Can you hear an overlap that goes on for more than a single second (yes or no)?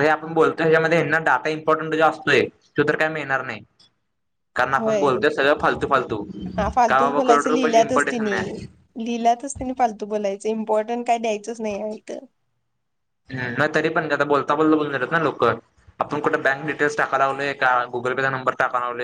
yes